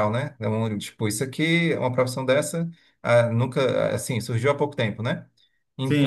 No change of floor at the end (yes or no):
no